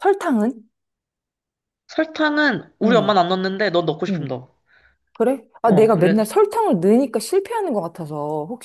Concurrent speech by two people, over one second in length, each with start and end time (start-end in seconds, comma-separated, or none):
none